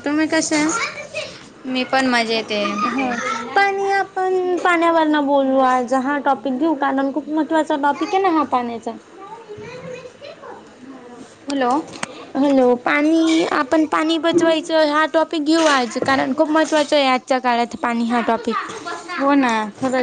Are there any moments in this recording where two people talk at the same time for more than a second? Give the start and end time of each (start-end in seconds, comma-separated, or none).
none